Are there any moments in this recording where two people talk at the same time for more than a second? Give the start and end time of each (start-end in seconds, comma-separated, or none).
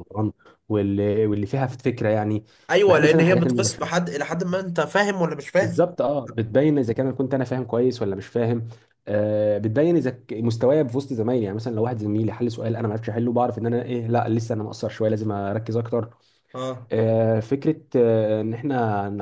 2.9-4.0